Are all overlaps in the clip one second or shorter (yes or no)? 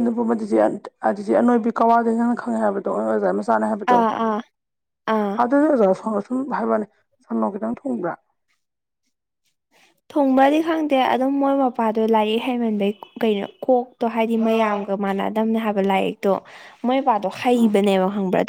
yes